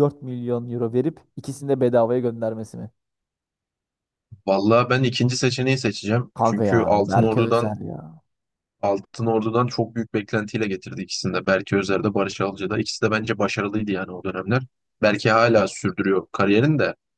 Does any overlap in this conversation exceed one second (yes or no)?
yes